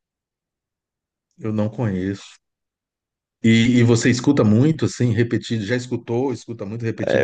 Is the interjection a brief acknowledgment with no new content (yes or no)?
no